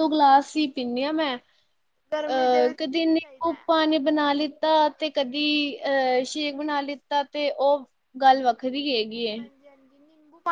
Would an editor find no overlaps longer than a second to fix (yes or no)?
no